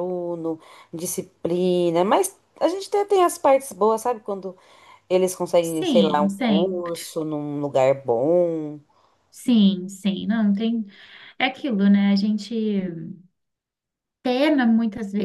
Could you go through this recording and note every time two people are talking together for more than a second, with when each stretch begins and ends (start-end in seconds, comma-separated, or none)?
5.6-7.0